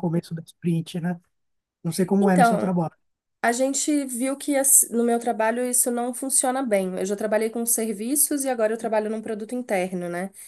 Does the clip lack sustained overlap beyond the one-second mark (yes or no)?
yes